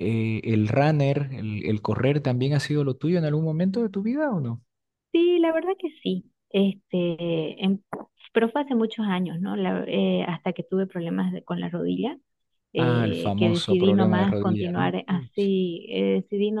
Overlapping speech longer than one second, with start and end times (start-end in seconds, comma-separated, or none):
12.8-15.2